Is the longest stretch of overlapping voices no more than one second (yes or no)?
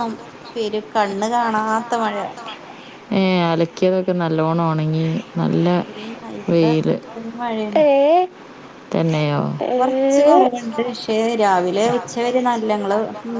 yes